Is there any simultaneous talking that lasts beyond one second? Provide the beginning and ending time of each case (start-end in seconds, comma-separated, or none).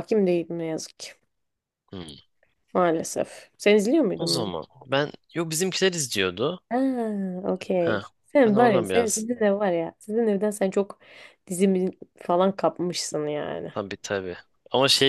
7.8-9.3